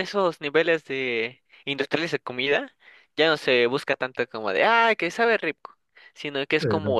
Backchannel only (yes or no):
yes